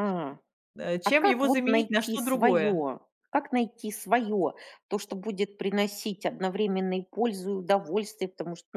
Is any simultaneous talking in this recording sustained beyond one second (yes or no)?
yes